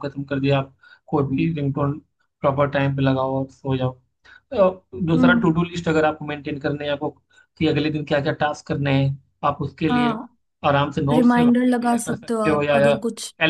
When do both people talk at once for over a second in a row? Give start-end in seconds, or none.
11.1-12.9